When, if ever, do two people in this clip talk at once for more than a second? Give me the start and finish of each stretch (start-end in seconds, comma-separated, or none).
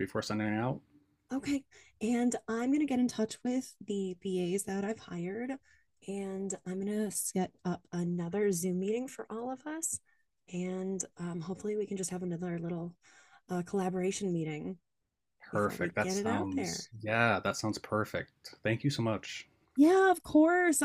15.5-16.9